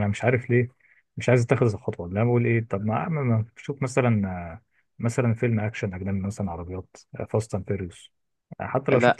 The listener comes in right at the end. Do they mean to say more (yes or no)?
yes